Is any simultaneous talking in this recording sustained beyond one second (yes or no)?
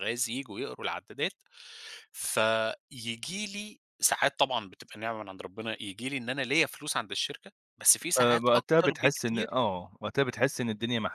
yes